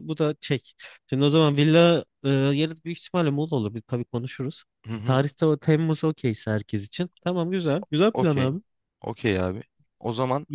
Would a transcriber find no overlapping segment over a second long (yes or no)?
yes